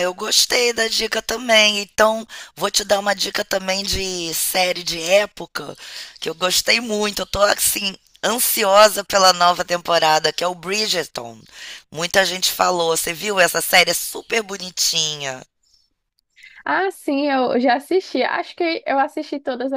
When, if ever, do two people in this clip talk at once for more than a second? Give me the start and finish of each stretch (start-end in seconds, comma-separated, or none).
none